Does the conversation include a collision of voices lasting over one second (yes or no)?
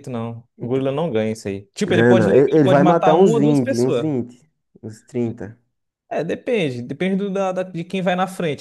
yes